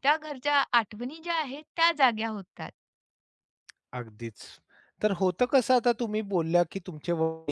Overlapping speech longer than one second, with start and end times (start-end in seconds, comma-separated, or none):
none